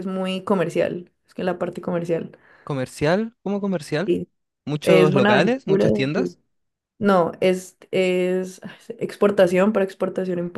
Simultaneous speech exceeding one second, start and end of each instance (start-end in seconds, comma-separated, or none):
4.8-6.3